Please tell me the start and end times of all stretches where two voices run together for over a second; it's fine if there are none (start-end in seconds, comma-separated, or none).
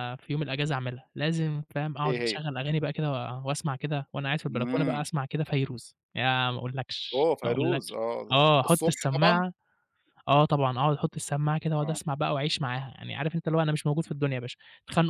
7.1-9.4